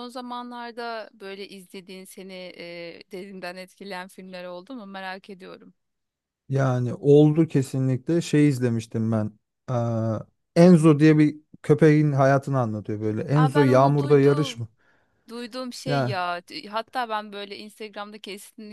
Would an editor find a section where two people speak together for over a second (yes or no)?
yes